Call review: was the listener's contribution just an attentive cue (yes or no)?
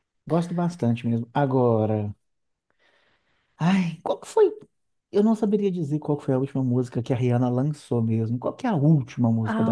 no